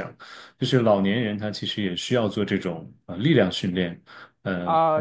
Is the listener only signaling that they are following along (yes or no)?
no